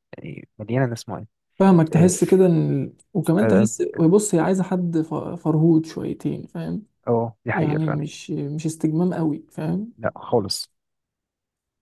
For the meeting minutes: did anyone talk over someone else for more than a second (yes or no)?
no